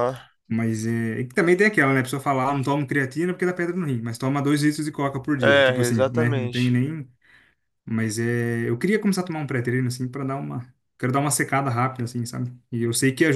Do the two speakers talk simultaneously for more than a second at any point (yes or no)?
yes